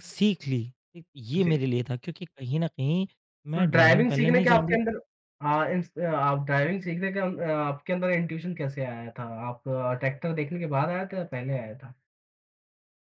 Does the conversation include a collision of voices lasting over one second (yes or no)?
yes